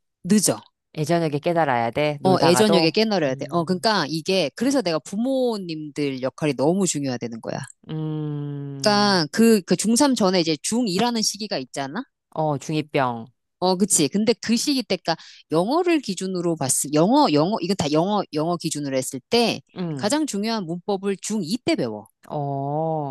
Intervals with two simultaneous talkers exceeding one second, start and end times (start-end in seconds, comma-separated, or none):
2.2-3.9